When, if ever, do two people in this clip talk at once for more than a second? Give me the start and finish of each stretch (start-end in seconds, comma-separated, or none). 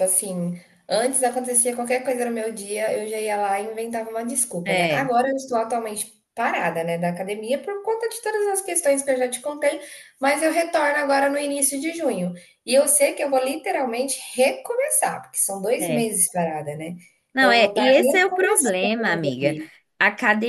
17.4-19.6